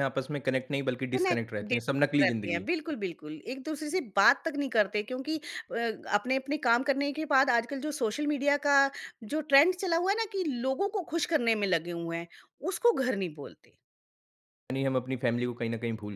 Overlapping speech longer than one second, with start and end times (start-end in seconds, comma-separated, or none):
1.2-2.7